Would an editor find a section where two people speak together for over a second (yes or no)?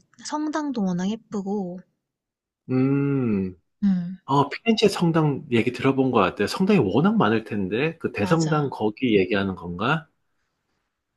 no